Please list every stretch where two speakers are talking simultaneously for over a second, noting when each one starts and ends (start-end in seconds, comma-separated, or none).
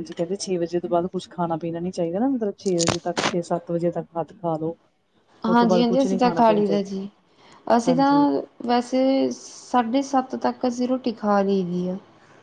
5.5-6.9